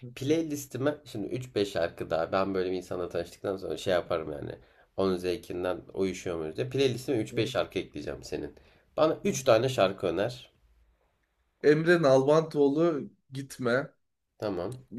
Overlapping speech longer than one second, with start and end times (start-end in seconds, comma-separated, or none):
none